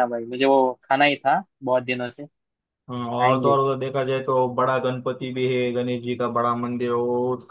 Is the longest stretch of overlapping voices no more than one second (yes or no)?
yes